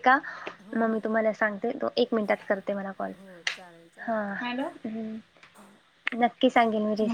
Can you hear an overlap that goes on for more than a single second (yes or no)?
no